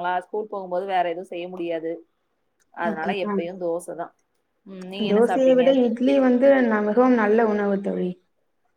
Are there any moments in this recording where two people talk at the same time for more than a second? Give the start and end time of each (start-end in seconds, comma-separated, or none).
none